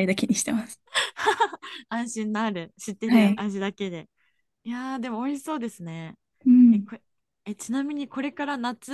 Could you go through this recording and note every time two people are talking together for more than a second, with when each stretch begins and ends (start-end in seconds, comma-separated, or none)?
none